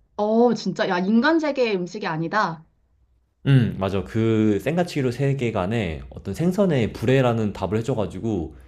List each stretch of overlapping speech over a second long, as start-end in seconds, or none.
none